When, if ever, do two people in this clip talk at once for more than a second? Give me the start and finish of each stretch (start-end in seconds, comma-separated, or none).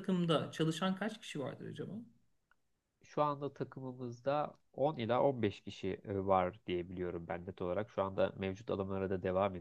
none